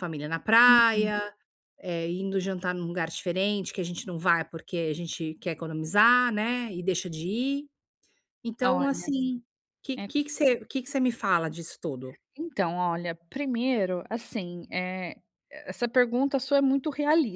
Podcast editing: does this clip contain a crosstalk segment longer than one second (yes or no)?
no